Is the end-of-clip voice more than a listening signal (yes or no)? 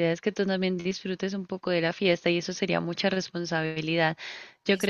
no